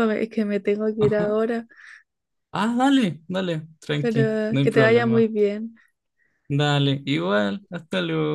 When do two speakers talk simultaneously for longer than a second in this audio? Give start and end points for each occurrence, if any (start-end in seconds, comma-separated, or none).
4.0-5.2